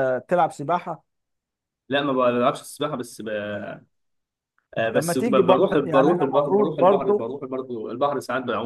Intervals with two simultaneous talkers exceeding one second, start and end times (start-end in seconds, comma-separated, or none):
4.9-7.3